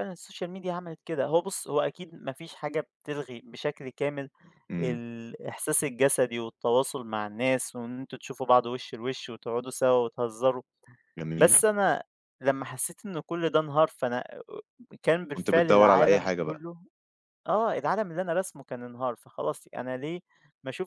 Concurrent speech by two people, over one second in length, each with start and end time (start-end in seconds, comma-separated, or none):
15.3-16.6